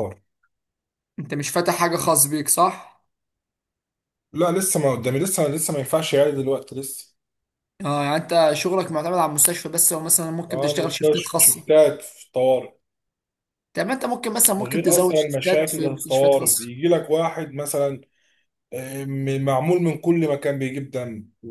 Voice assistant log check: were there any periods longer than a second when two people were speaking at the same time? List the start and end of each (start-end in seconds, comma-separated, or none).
10.5-11.7, 14.6-16.7